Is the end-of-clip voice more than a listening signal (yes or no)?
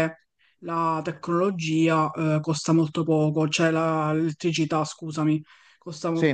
no